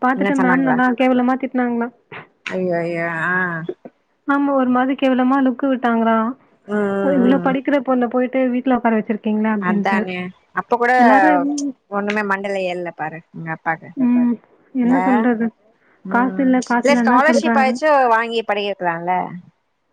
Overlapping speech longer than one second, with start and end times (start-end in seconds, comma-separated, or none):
16.1-17.8